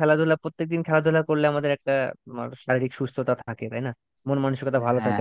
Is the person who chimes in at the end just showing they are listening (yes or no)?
yes